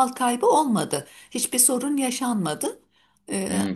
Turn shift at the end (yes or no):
yes